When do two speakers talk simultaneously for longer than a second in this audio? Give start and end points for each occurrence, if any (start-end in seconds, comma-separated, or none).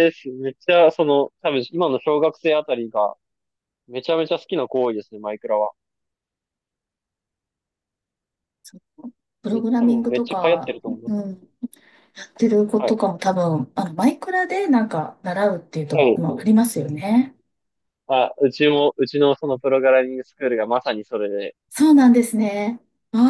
9.5-11.2